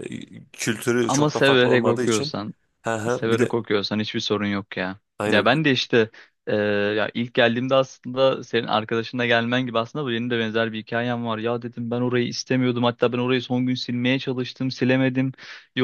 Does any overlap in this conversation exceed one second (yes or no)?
yes